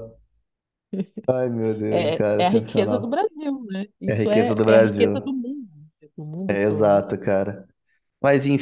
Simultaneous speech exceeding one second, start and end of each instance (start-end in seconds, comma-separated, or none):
1.9-3.2, 4.1-5.4